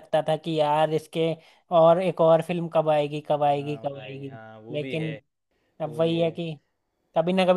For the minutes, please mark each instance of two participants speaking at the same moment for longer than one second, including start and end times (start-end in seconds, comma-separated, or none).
3.5-5.2